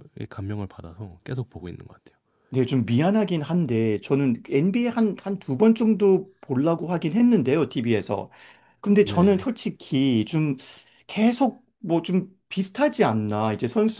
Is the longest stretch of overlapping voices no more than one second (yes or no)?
yes